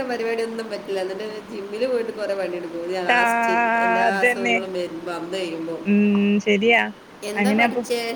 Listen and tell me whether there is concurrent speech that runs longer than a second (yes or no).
yes